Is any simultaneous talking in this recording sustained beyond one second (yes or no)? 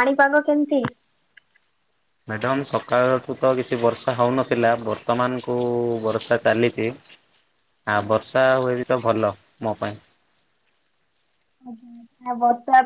no